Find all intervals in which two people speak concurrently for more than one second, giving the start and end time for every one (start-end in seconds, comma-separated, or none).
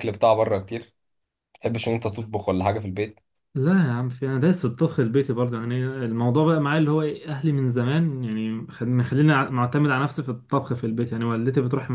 none